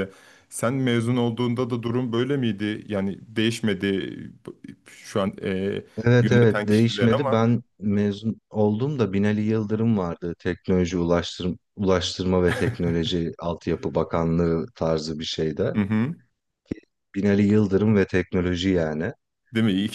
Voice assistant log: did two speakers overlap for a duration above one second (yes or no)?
yes